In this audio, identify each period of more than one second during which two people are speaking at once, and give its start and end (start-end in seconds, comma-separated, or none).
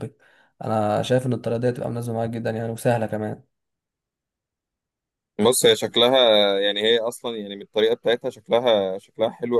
none